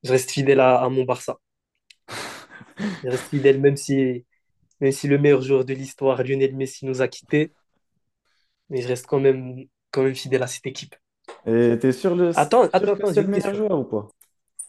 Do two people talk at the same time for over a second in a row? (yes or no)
yes